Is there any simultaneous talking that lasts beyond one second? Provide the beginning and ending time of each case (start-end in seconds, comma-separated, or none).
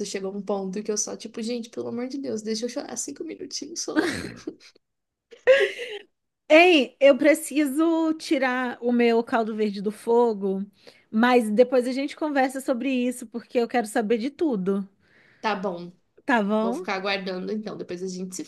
none